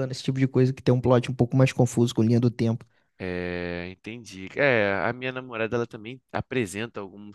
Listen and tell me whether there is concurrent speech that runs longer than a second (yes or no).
no